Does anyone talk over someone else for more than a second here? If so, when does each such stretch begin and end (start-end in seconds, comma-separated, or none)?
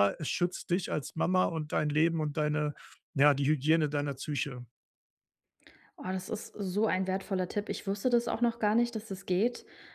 none